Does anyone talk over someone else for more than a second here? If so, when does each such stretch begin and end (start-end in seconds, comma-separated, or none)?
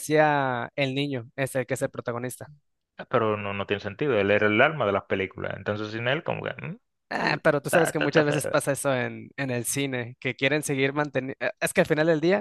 7.2-8.6